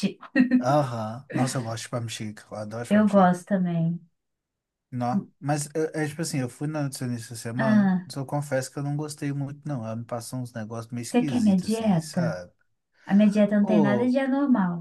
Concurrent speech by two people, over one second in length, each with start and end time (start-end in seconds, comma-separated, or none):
11.1-12.4